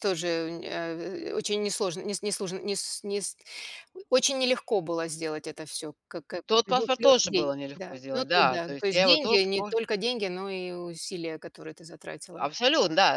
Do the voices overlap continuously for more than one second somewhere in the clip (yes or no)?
yes